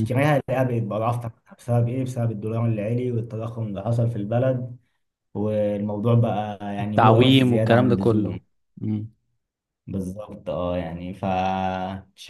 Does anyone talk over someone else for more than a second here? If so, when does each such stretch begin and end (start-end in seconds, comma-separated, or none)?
6.8-8.4